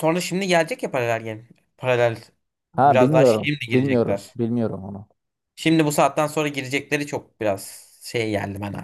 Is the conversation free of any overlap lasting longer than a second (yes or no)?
no